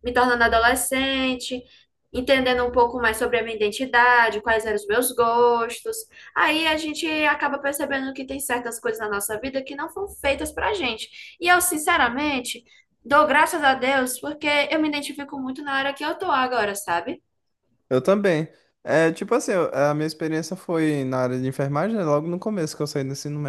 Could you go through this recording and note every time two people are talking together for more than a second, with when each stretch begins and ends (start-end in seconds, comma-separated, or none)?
none